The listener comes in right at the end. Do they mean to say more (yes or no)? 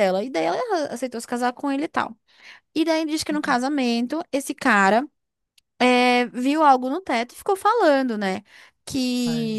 no